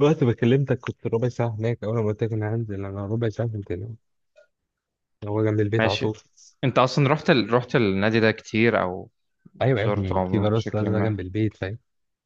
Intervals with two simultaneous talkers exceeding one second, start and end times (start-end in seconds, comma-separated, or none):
9.7-11.2